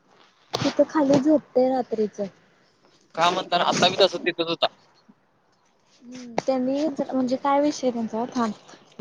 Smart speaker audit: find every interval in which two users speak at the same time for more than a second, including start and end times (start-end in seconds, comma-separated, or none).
none